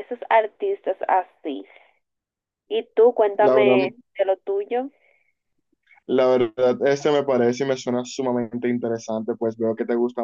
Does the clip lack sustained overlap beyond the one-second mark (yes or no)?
yes